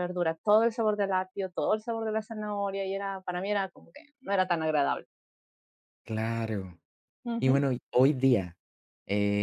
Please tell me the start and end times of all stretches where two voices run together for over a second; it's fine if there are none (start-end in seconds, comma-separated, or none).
none